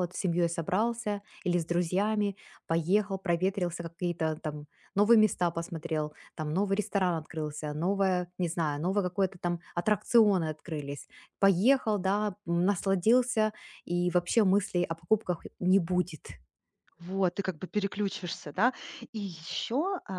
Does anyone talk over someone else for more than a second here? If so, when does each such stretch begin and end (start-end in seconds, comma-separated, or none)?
none